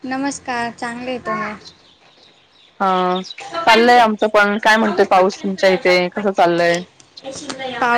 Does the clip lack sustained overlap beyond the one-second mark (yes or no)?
no